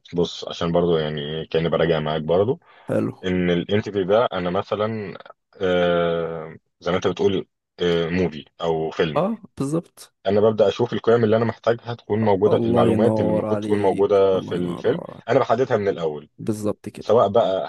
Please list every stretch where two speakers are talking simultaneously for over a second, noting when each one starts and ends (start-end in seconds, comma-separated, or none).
12.5-15.4